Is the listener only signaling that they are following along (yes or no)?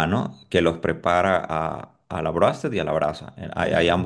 yes